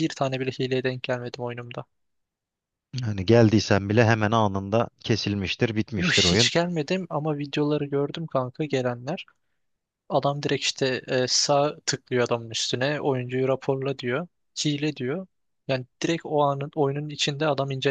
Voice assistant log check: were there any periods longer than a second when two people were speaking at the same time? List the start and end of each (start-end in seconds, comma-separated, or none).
none